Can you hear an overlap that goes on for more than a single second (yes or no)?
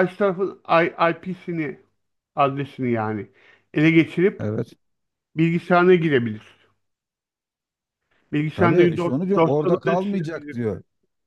yes